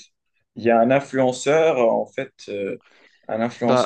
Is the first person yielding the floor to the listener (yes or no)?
no